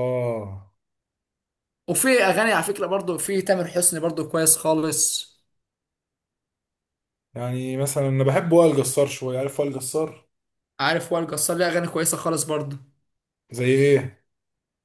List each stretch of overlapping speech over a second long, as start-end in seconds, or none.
none